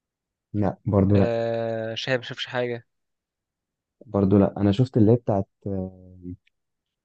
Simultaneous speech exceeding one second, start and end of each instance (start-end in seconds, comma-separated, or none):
none